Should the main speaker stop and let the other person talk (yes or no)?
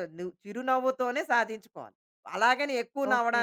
no